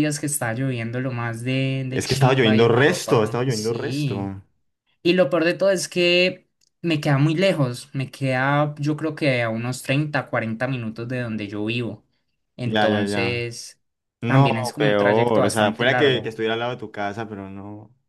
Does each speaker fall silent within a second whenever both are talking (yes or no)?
no